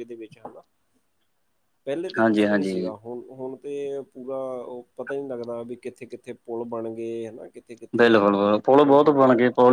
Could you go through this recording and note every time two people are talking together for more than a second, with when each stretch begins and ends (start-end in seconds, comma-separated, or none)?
none